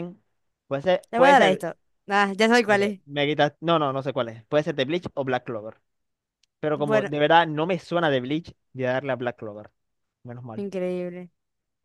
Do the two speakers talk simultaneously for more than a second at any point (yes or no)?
no